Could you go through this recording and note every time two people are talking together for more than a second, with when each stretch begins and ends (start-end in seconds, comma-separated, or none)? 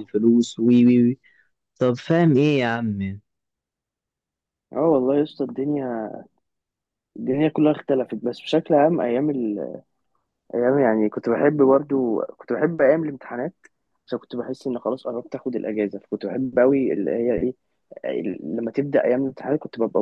none